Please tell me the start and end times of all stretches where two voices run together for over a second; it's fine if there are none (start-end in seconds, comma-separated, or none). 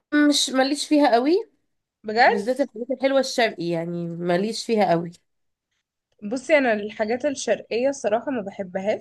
none